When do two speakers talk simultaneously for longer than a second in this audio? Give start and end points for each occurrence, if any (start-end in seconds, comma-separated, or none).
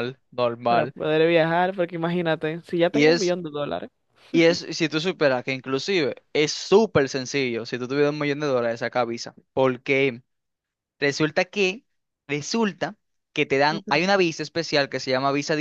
none